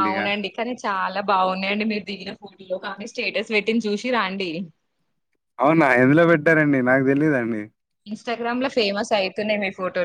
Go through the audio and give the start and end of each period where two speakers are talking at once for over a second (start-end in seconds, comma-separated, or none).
none